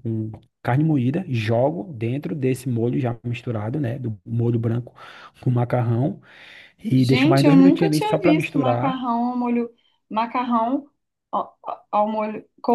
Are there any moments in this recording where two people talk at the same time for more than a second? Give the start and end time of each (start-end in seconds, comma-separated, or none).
7.0-9.0